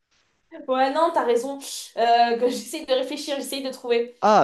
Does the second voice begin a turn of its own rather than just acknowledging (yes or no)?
yes